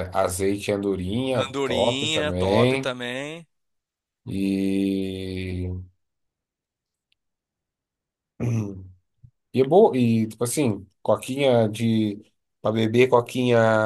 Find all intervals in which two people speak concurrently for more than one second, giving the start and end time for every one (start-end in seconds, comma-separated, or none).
1.3-3.0